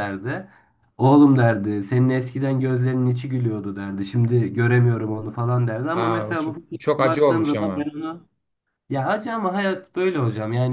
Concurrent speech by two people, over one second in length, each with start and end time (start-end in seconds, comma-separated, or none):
5.9-7.9